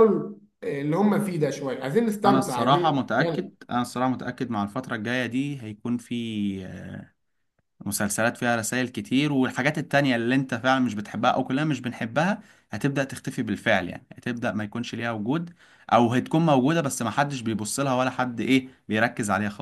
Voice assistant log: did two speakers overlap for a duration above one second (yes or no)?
yes